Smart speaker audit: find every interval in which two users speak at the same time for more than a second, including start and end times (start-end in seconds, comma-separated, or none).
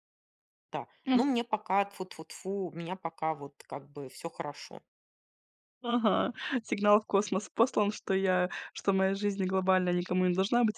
none